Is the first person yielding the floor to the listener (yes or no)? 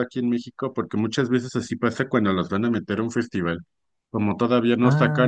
no